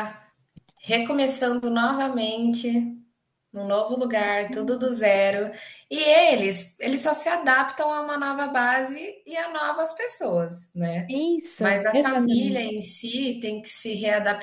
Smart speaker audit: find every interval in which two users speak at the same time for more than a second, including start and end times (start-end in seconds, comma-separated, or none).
11.6-12.8